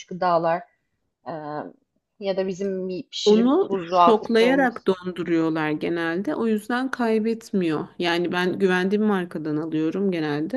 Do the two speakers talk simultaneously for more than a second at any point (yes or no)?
yes